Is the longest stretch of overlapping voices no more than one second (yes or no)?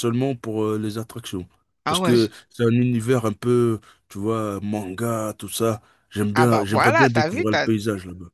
no